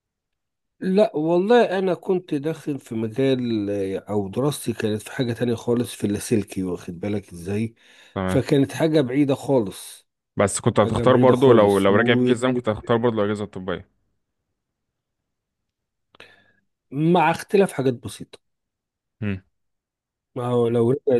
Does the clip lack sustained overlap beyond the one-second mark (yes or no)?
no